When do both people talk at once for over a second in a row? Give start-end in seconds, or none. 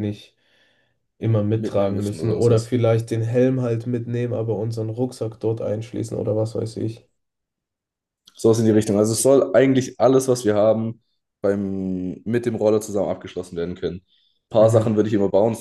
1.6-2.8